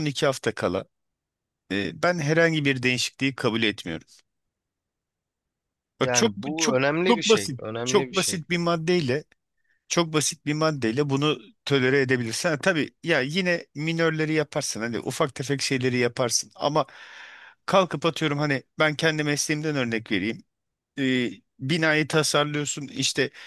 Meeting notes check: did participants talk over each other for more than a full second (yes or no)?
yes